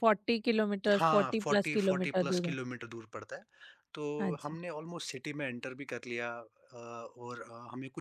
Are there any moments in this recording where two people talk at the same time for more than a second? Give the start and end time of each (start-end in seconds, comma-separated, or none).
0.9-2.5